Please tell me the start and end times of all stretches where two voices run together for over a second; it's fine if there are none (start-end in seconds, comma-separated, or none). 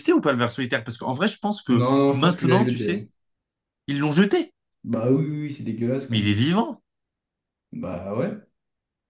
1.7-3.0